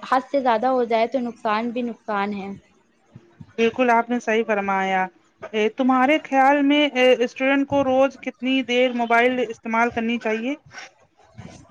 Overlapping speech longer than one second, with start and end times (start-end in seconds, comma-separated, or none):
none